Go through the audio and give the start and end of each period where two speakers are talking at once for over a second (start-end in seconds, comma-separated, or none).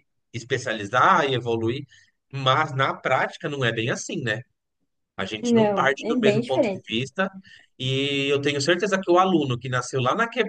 5.4-7.0